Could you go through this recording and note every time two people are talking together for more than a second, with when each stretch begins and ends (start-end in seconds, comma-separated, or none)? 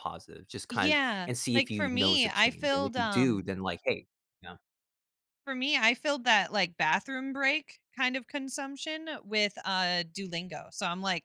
0.7-3.5